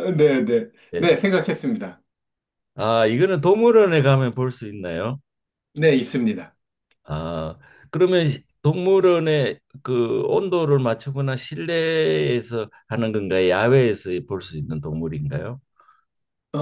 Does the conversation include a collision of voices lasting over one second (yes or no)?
no